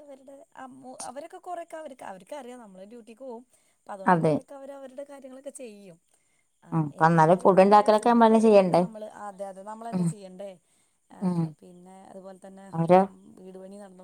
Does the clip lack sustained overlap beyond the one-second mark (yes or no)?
no